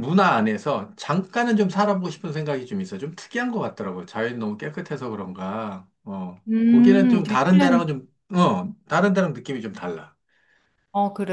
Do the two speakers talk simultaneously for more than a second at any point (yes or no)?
yes